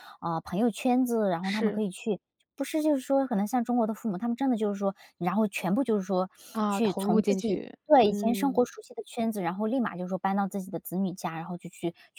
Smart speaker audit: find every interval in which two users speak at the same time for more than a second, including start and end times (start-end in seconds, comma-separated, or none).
6.7-8.7